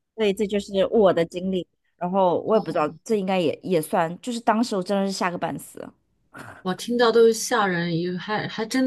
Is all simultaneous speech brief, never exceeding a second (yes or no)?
yes